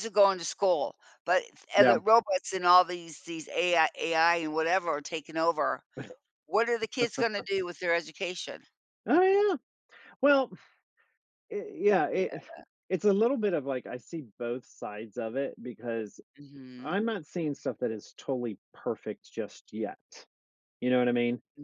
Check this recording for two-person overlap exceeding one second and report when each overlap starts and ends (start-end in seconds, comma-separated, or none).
none